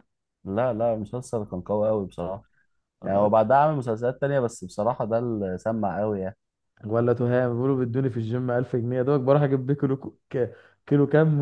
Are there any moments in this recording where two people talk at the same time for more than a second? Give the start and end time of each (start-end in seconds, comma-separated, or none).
none